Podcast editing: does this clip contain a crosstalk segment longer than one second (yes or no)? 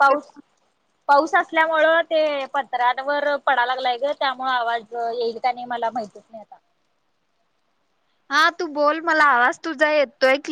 no